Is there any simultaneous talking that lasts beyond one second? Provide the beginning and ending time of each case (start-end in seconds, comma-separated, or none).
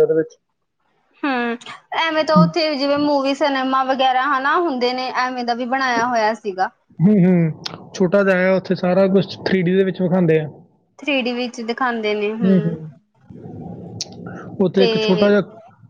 none